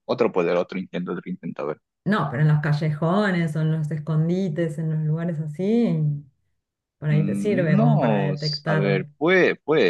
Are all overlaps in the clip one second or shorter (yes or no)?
no